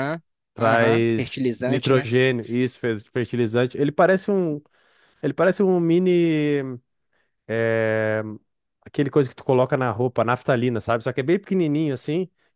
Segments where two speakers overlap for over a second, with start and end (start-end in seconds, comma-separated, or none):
0.6-2.1